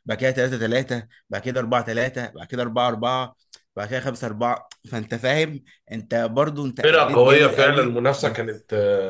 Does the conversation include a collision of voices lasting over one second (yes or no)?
yes